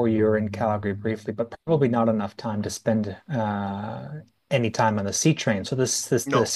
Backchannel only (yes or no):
yes